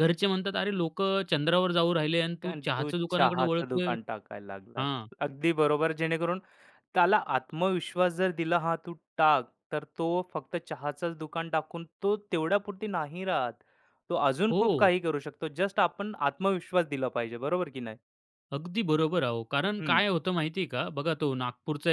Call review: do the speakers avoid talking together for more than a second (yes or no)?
no